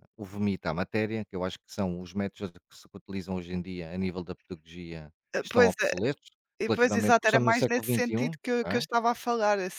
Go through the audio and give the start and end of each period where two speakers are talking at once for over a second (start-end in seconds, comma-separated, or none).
6.7-8.8